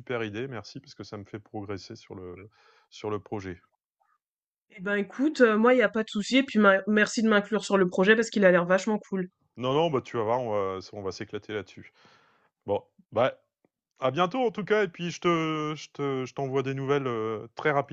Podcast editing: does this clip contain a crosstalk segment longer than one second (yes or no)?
no